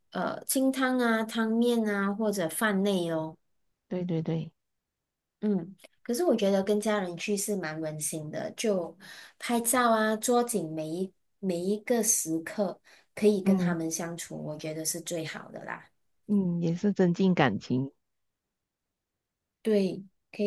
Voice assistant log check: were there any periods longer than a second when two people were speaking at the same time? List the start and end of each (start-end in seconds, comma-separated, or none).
none